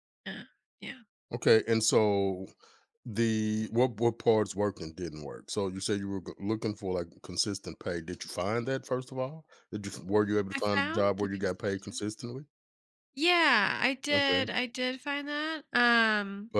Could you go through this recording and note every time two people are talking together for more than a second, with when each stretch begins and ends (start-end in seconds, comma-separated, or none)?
10.5-12.1